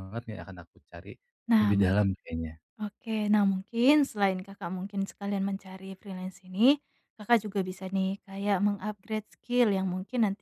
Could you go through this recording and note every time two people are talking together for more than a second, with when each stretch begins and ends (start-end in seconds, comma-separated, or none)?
none